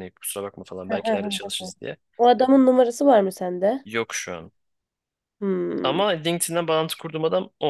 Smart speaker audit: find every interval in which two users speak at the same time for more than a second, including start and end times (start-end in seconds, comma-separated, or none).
none